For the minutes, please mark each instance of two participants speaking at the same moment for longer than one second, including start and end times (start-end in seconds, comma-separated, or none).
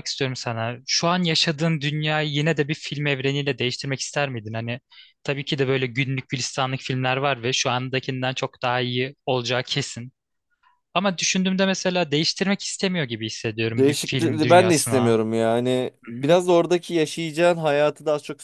13.7-15.2